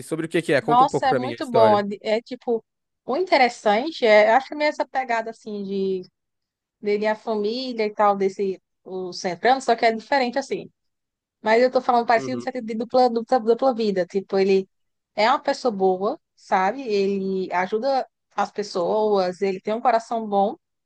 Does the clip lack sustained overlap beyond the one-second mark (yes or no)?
no